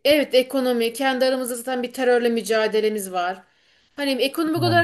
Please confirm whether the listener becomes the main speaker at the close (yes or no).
no